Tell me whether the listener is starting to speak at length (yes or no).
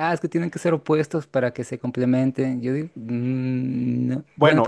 yes